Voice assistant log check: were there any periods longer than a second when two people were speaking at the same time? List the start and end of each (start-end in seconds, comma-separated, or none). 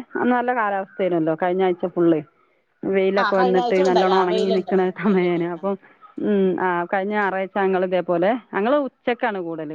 3.2-5.6